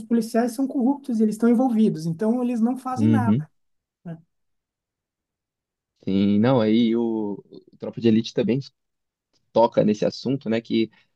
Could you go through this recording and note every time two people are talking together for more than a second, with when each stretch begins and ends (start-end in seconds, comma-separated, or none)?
none